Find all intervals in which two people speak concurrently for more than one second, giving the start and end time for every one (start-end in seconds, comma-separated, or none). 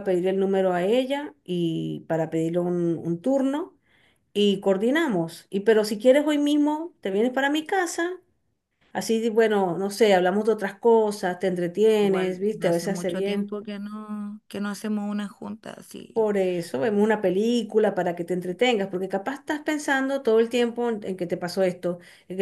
12.0-13.6